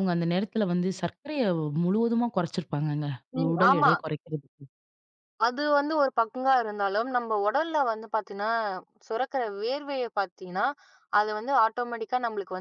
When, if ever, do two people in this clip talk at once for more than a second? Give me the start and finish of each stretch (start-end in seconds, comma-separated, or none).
none